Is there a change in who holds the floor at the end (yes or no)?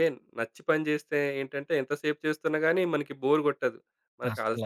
no